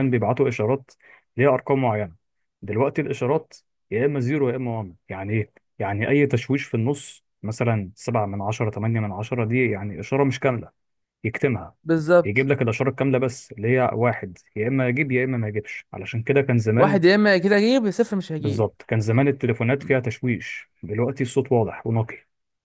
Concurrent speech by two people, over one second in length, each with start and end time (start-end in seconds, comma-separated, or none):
none